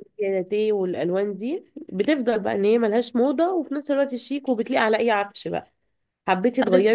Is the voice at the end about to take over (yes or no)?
no